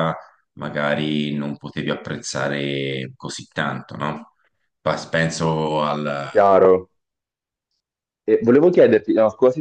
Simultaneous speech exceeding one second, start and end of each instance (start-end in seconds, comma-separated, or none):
none